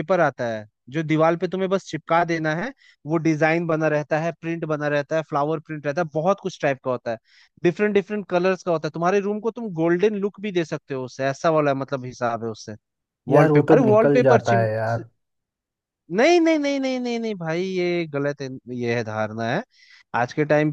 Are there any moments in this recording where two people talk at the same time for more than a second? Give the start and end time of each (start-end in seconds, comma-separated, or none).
13.3-14.7